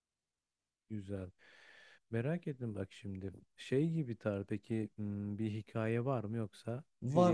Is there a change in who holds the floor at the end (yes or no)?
yes